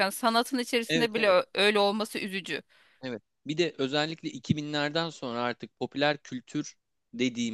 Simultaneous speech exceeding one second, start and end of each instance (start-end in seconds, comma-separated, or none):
none